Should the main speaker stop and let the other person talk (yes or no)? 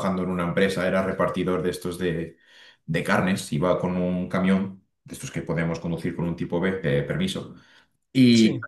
no